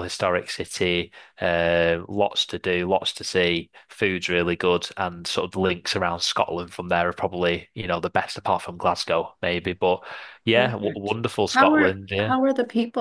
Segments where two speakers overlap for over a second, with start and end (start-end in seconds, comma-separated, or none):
10.5-12.3